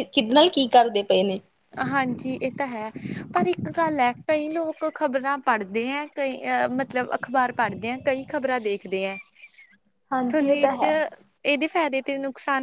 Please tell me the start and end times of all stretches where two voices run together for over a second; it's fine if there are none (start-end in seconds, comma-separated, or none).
none